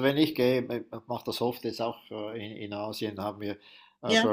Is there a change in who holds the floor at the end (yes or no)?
no